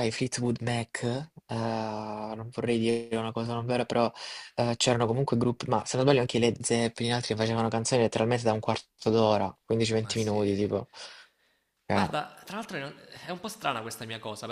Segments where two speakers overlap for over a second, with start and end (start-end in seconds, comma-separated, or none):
none